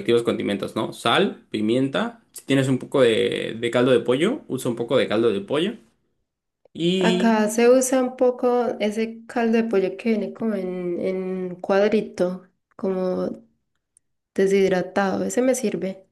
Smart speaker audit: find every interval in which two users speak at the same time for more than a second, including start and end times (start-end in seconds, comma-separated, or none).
none